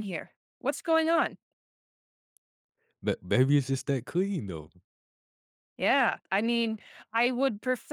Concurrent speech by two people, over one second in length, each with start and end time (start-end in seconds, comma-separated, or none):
none